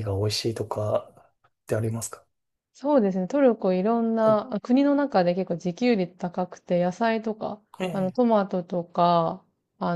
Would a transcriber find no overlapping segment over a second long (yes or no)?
yes